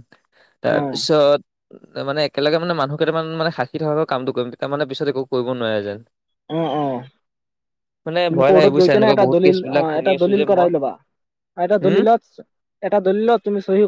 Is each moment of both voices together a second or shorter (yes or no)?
no